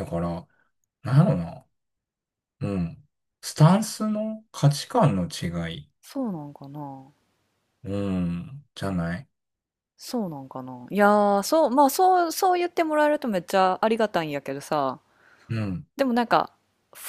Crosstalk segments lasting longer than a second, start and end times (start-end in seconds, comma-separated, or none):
none